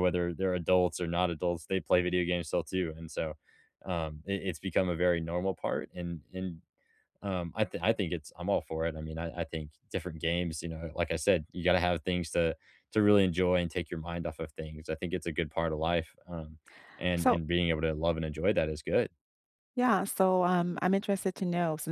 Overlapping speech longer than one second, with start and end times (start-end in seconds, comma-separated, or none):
none